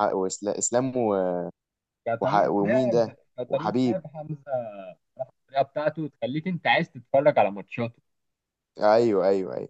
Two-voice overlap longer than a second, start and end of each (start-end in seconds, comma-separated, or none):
2.2-4.0